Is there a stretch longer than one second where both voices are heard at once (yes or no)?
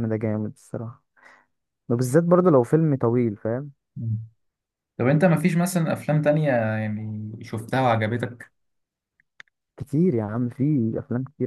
no